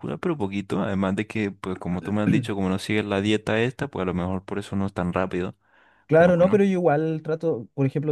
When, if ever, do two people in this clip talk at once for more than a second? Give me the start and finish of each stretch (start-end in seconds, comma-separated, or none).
none